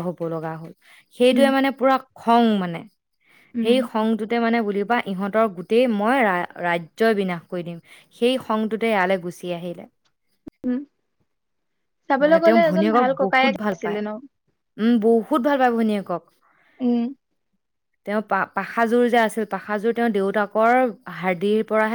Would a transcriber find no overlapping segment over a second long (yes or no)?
no